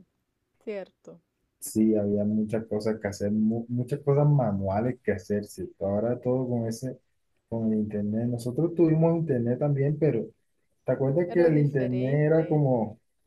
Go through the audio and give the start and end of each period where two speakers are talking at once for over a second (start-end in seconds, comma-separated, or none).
11.3-12.6